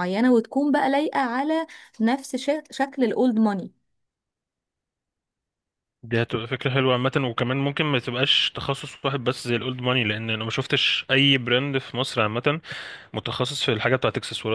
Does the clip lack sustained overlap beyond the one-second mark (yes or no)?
yes